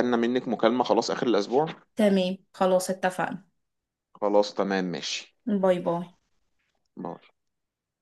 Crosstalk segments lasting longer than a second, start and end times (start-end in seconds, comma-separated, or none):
none